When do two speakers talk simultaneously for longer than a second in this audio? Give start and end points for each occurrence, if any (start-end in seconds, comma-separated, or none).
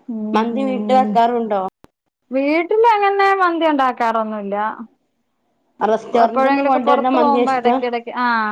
6.2-7.8